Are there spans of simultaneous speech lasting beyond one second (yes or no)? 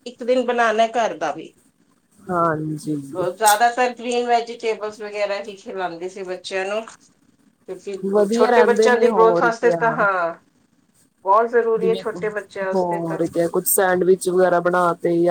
yes